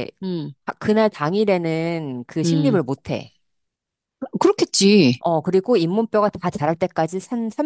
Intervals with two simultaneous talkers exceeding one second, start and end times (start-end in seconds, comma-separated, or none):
none